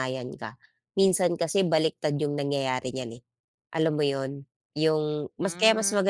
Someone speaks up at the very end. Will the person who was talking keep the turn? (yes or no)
yes